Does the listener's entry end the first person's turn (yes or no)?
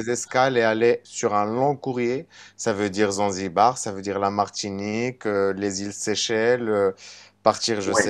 yes